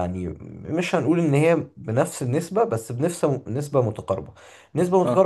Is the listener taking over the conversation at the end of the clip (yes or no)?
no